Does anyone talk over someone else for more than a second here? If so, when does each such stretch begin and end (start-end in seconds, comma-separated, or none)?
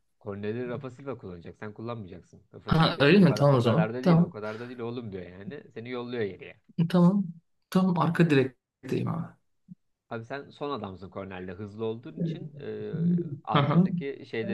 2.6-4.3